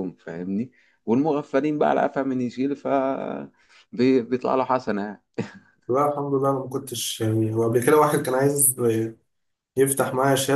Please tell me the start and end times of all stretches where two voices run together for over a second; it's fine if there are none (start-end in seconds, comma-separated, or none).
none